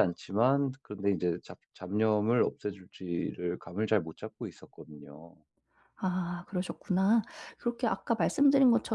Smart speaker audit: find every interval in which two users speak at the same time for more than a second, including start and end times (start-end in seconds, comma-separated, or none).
none